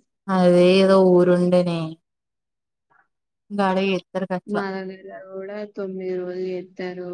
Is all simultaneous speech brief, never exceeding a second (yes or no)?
yes